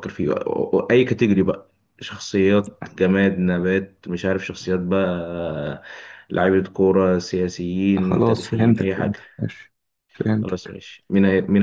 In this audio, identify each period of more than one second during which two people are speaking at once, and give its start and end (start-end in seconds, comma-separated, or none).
8.0-9.2